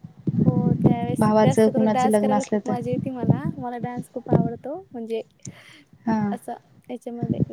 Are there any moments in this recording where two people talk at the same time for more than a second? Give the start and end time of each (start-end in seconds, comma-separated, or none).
1.2-2.8